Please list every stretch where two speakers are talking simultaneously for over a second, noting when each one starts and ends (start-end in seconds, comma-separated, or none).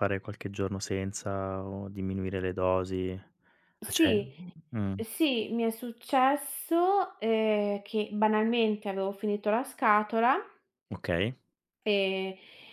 none